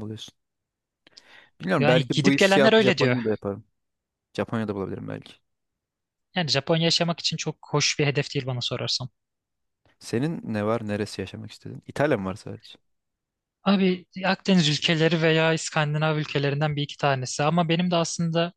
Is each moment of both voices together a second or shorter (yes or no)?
no